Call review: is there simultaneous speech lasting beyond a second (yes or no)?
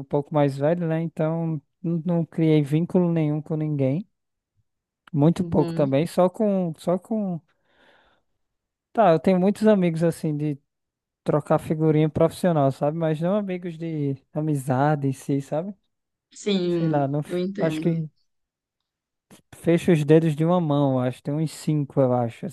yes